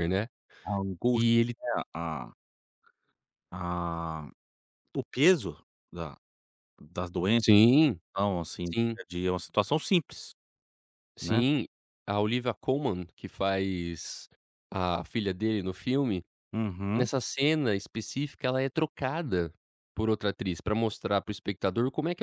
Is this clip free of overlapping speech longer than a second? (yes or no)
yes